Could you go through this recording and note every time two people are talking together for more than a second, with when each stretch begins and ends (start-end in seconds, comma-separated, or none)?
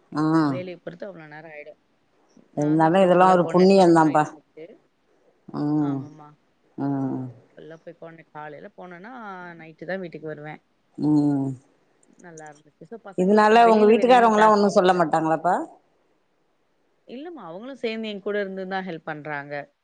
2.6-4.2